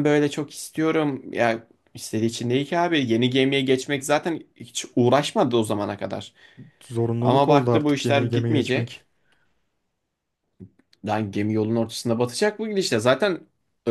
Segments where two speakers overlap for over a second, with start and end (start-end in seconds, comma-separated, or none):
7.2-9.0